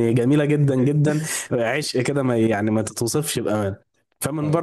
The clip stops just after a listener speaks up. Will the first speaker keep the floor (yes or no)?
yes